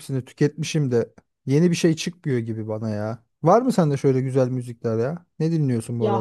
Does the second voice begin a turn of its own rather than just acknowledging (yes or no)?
yes